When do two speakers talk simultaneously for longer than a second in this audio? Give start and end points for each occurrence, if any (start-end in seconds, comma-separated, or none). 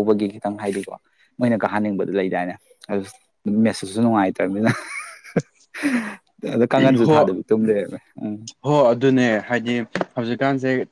none